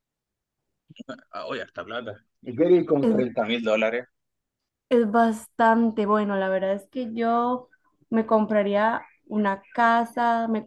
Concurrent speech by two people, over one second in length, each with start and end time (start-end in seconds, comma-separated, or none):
none